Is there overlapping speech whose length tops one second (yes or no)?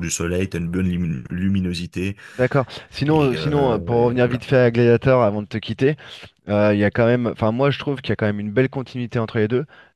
yes